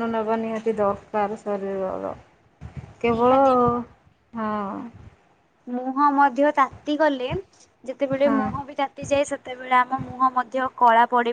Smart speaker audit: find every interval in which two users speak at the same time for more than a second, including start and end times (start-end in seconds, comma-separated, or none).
none